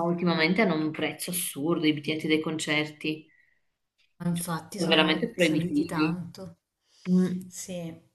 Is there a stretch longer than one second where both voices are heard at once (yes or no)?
yes